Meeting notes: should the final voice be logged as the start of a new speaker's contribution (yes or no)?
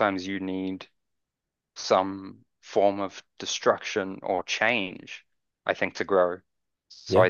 no